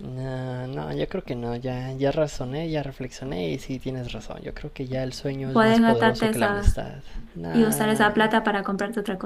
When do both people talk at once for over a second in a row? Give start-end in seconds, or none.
5.5-6.8